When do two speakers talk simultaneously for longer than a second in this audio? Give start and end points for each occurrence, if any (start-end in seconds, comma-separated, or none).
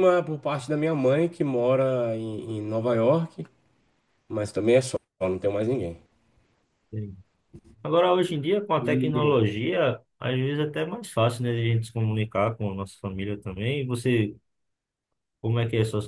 none